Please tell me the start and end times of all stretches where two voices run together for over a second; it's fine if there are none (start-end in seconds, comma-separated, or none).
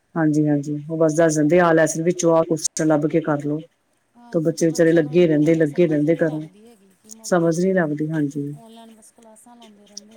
4.4-6.4